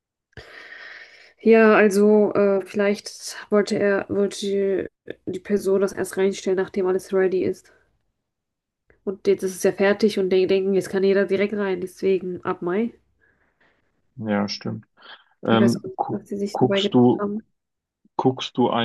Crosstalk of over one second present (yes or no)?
yes